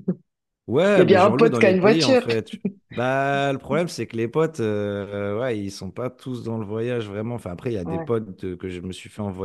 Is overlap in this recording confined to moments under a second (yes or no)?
no